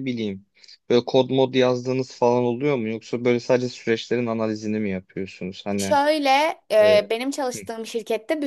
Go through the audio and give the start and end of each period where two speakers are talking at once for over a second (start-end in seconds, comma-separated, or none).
none